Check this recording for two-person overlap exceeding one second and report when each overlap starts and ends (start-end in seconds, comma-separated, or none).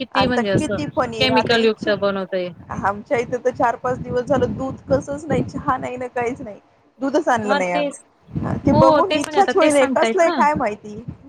8.7-10.3